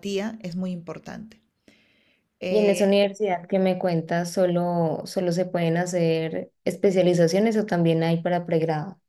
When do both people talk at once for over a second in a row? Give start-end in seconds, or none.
none